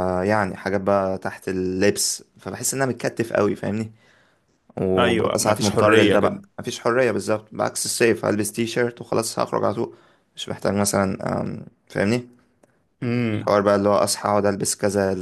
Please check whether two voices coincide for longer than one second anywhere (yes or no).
yes